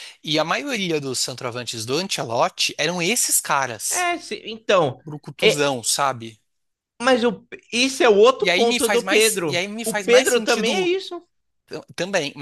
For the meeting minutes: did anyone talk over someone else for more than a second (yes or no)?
yes